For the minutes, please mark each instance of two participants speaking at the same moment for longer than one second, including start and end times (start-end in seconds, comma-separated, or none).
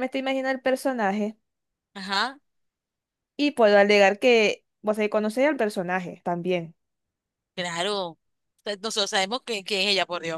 none